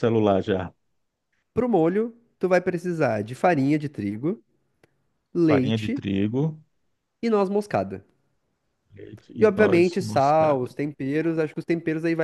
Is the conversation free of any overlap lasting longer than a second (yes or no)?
no